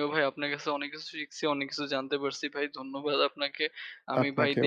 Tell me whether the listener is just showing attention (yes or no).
yes